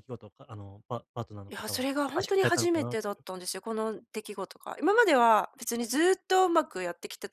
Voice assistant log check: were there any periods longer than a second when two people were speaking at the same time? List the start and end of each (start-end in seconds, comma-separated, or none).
1.5-3.2